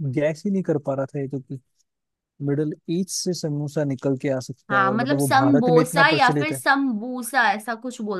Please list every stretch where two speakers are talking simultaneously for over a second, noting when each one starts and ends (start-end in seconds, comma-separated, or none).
4.7-6.6